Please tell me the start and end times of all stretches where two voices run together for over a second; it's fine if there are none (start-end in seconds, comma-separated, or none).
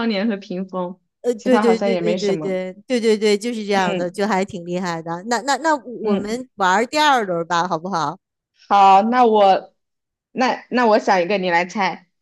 1.4-2.6